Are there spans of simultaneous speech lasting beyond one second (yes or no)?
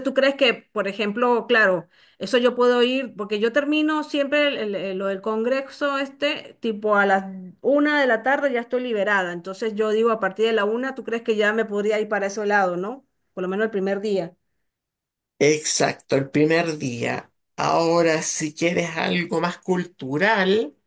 no